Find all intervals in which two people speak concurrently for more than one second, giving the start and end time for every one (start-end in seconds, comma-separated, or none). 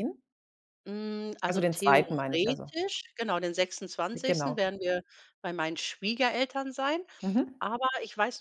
1.5-2.7